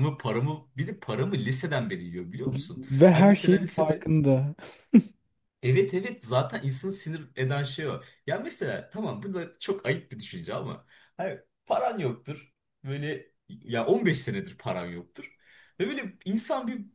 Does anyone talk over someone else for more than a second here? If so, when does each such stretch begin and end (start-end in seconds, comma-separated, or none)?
2.8-4.1